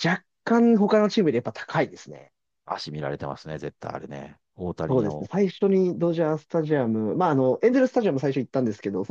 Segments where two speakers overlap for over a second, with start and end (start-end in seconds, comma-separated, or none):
none